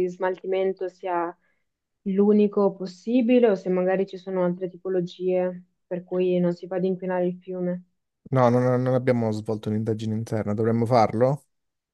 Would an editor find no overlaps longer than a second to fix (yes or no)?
yes